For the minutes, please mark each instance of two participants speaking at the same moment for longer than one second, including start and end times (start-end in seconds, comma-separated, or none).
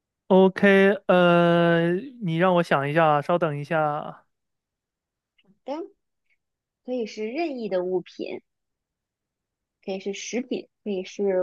none